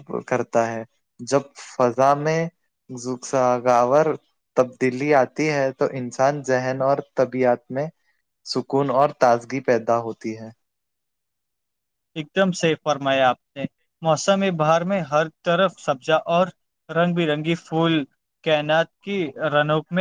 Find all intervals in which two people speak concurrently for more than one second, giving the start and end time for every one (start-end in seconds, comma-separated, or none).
none